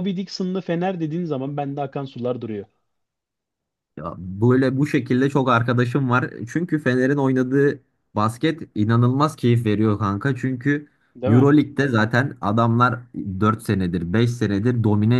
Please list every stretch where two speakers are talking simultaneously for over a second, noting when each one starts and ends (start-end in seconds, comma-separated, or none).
none